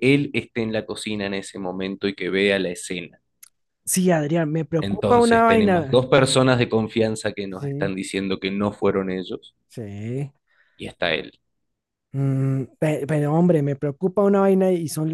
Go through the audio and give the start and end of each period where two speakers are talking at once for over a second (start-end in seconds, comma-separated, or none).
4.8-6.0